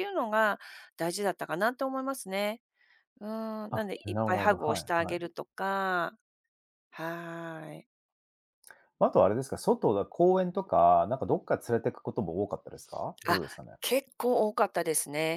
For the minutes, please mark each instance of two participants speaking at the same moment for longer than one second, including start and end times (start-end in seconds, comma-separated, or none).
3.7-5.2